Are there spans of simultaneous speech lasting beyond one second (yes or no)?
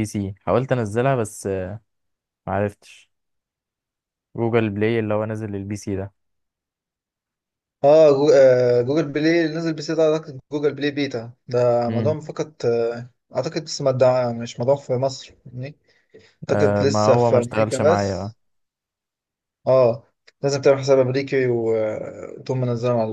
yes